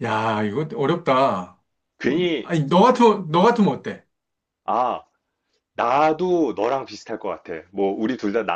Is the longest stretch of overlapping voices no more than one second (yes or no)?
yes